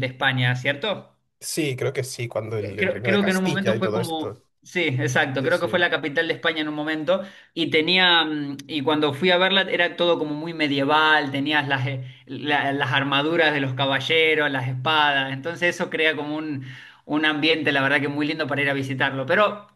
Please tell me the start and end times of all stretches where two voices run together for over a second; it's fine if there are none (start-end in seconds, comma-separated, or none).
2.8-4.4